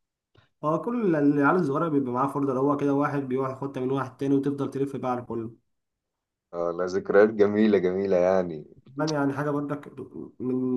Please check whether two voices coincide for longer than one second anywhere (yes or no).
no